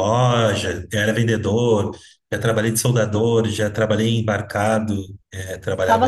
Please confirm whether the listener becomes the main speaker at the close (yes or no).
yes